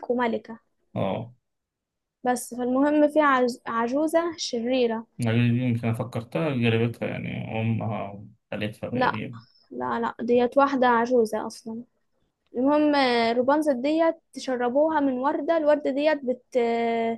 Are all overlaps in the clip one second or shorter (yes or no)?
yes